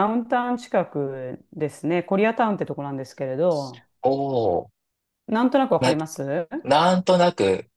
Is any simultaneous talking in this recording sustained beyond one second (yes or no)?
no